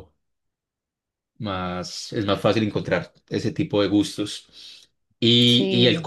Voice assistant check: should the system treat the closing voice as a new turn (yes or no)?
no